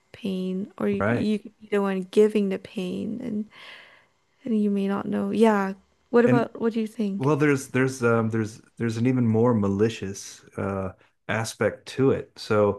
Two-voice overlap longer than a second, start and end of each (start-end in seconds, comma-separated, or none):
none